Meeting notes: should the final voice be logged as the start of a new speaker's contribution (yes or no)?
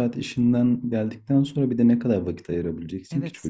yes